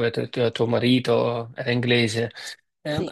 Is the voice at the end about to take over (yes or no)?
no